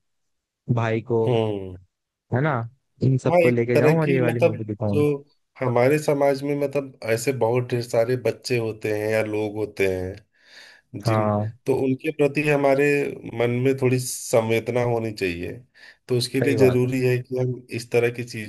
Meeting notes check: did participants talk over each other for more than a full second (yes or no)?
yes